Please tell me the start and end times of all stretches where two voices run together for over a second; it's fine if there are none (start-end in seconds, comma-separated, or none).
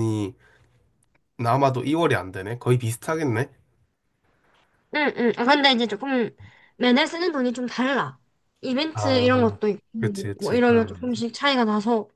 8.9-11.2